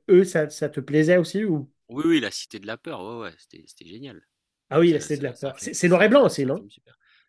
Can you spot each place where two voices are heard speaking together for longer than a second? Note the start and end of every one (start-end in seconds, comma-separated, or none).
4.8-6.6